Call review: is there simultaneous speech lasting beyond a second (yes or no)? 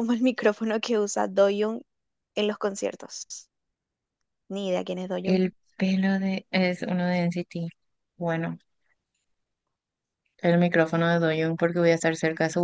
no